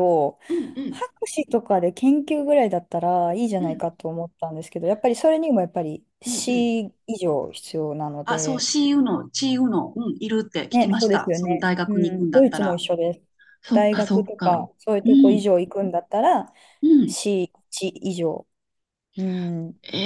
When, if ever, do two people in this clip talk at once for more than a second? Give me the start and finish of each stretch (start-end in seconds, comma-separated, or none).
10.7-12.8, 13.7-15.5